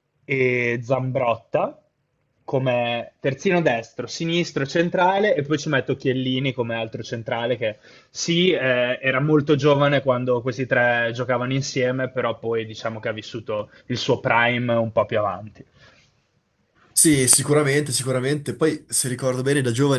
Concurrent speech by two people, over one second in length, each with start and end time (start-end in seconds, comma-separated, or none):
none